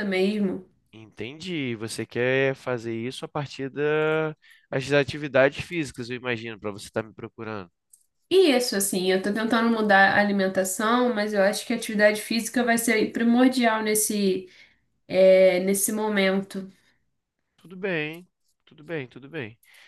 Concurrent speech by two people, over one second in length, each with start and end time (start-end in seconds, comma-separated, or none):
none